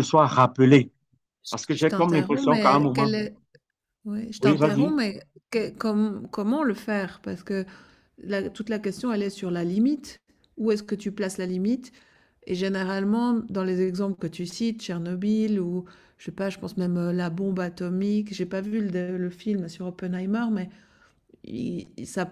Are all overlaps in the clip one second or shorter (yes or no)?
no